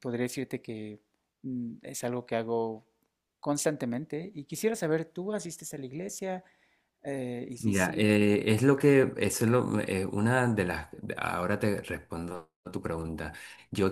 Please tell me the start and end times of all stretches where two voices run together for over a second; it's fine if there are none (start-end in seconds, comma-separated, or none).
none